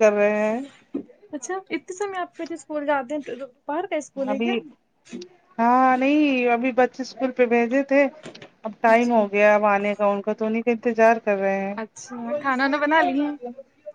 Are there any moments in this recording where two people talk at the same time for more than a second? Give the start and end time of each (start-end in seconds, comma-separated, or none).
none